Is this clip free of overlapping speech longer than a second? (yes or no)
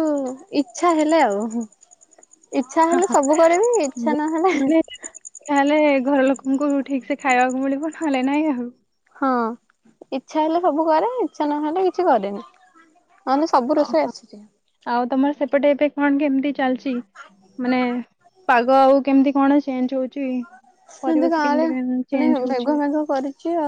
yes